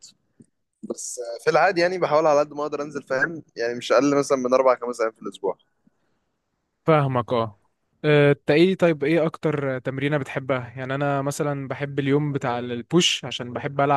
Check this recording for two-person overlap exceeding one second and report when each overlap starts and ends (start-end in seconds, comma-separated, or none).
none